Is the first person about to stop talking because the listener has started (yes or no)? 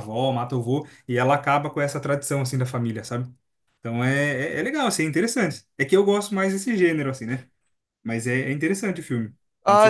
yes